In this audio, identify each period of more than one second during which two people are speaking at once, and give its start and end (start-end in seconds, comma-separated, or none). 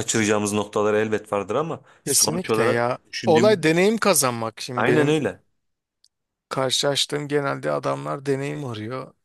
2.1-3.7